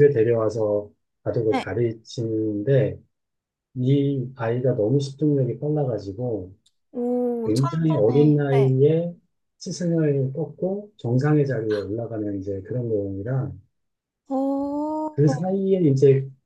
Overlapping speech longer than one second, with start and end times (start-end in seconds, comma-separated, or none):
7.5-8.8